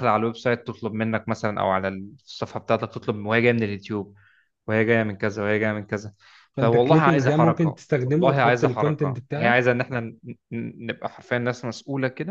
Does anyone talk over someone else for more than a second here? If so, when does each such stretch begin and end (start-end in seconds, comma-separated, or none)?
6.6-9.6